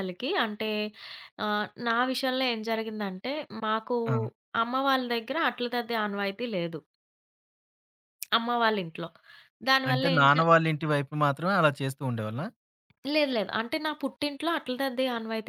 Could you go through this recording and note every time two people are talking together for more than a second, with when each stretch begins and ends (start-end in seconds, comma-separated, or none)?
none